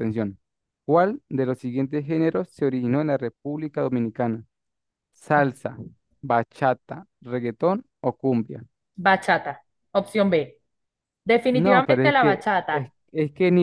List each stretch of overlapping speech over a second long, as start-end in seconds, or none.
11.5-12.9